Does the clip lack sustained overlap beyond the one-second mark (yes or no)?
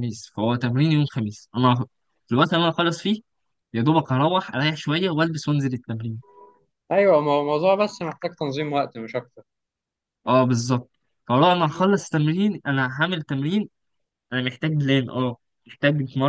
yes